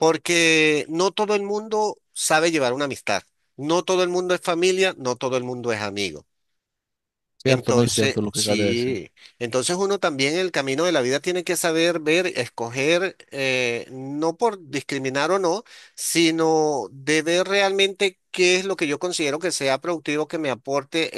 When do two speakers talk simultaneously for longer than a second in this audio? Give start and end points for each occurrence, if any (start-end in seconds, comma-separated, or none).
7.4-8.9